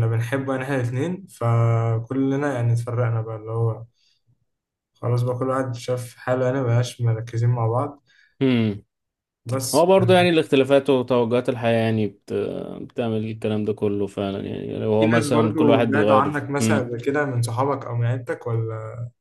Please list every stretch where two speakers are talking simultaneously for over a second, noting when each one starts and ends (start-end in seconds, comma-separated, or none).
15.0-16.9